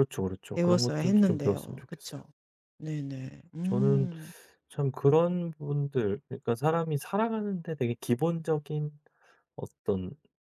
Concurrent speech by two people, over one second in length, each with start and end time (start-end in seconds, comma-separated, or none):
0.5-2.2